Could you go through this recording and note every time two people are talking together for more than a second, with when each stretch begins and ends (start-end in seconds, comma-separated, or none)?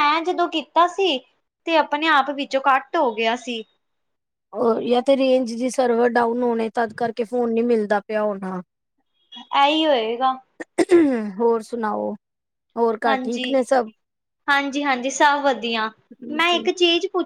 none